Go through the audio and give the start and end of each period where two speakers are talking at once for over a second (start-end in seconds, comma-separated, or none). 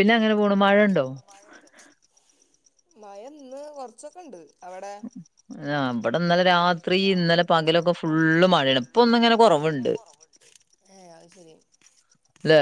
8.0-9.9